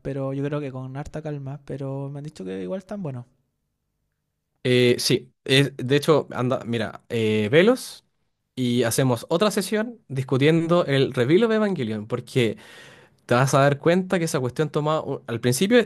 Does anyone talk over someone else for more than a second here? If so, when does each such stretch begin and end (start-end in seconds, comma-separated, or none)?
none